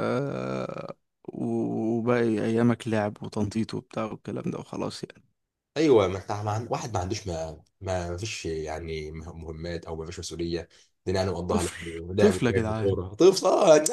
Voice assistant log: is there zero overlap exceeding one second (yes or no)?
no